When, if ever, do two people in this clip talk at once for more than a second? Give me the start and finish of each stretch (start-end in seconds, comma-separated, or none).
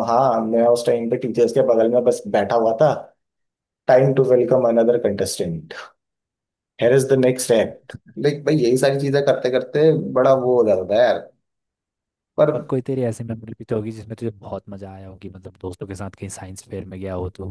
none